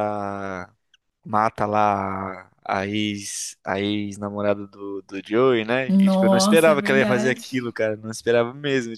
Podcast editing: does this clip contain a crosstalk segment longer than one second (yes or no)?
yes